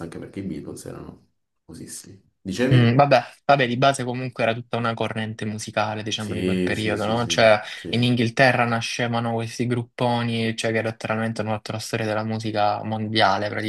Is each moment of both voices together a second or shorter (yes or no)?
no